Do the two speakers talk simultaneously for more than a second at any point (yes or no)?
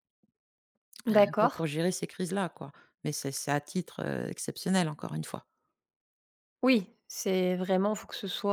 no